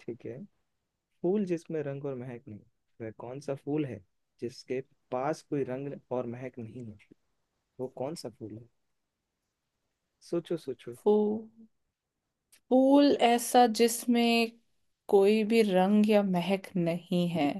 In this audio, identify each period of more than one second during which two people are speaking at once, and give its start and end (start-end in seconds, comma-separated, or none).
none